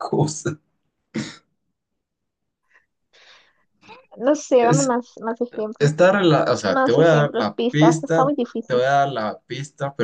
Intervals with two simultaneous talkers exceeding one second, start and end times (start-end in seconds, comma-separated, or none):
6.6-8.8